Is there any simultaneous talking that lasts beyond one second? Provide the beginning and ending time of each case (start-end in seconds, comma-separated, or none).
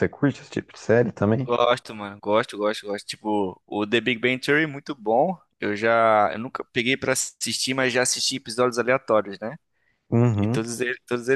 none